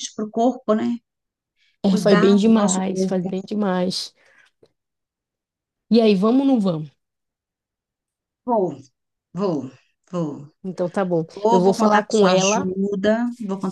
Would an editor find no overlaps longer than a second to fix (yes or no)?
no